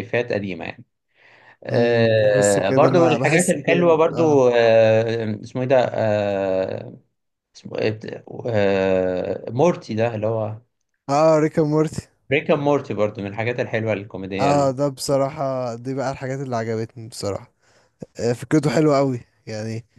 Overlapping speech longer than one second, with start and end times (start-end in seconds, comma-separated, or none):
1.7-4.4